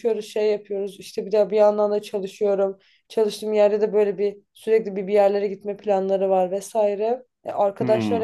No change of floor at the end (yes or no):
yes